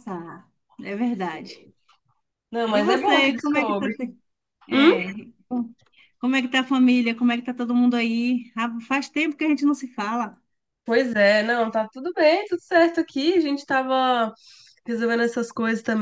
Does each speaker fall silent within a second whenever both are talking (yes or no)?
no